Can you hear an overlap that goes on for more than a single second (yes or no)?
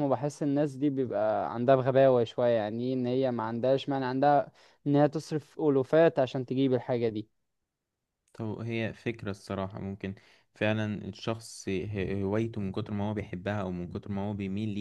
no